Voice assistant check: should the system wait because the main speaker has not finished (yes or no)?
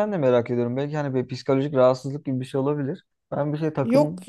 yes